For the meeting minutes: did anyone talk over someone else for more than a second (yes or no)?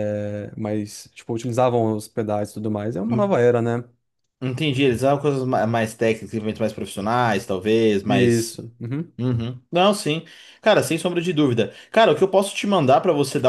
no